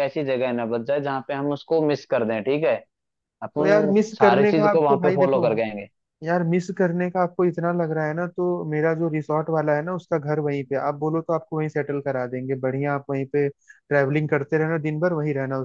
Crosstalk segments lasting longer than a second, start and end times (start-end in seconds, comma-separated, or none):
3.6-5.4